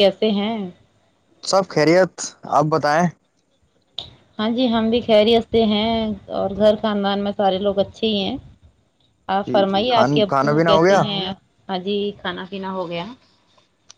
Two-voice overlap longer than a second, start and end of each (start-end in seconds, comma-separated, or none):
9.5-11.0